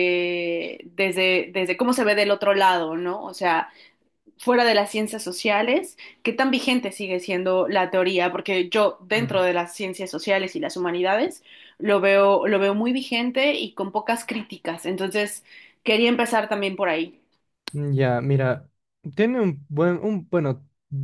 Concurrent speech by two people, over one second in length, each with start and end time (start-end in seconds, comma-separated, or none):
none